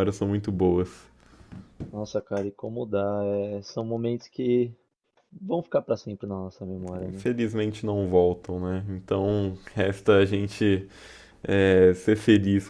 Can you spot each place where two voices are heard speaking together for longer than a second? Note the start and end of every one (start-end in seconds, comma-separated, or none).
none